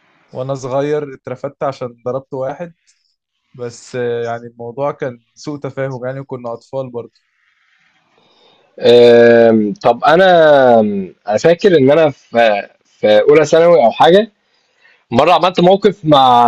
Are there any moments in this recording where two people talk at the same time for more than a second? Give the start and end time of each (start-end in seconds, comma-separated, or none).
none